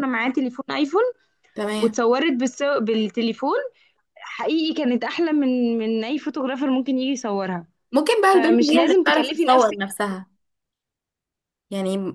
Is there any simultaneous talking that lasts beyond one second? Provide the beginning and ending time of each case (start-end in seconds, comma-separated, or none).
8.3-9.8